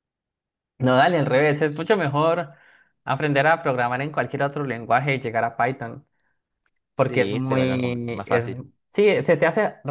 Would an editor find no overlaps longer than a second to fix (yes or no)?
no